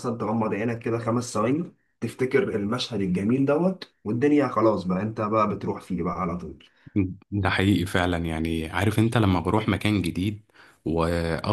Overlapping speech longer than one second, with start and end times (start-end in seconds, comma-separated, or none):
none